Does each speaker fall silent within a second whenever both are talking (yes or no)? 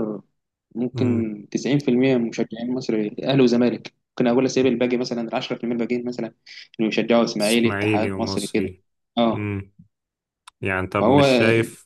no